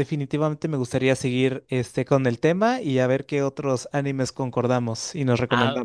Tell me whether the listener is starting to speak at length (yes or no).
yes